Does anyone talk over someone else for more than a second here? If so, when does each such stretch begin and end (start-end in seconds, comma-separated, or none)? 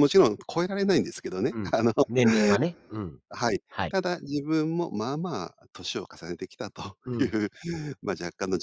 none